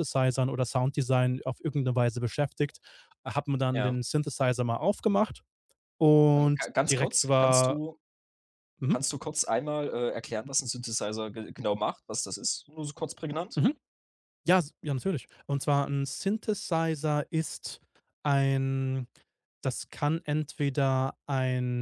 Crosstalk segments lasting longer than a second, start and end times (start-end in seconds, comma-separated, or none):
6.4-7.8